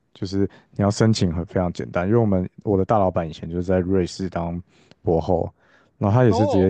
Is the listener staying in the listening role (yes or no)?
yes